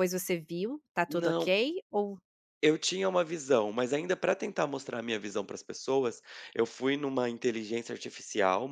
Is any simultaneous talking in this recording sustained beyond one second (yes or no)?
no